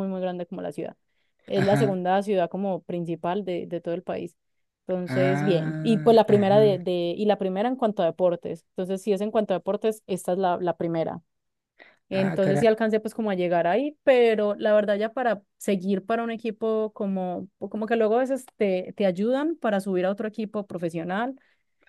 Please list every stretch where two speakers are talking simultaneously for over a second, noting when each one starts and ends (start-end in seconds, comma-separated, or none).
5.1-6.8